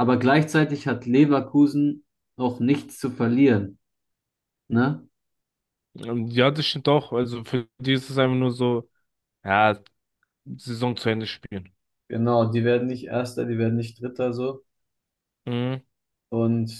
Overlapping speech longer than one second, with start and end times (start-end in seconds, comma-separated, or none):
none